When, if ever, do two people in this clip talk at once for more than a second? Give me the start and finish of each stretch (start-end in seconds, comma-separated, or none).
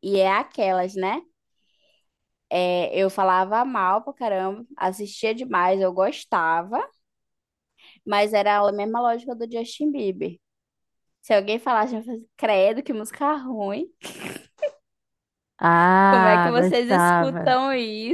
16.1-17.5